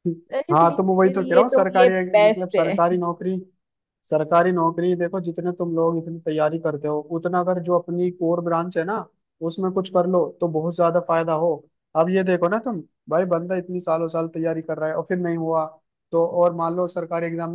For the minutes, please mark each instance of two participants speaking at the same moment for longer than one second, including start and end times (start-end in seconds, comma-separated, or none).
0.5-2.8